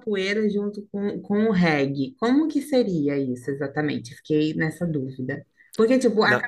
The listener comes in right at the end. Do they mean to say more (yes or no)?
no